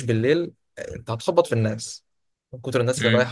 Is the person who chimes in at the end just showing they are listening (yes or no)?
yes